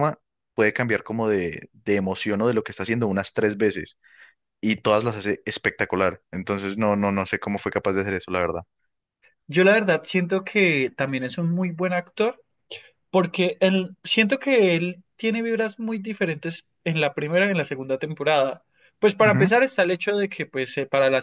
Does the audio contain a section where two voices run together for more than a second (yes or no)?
no